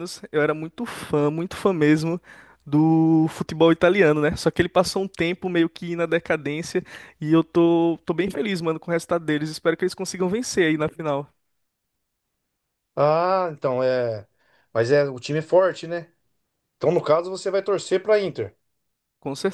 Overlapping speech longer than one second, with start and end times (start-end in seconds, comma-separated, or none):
none